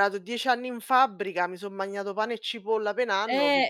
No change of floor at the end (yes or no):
no